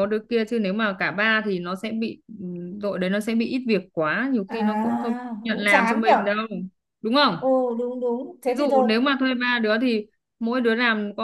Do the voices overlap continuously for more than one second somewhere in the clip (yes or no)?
yes